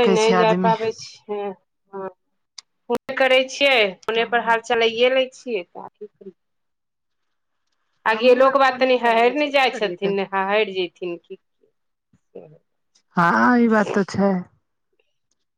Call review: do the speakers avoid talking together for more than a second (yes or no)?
no